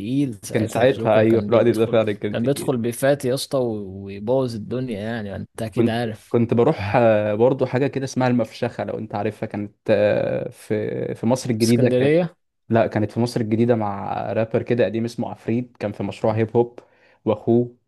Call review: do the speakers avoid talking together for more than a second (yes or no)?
no